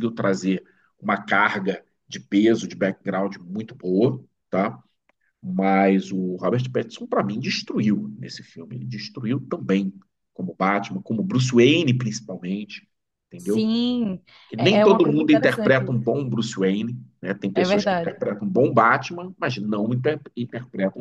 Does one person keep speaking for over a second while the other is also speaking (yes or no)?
yes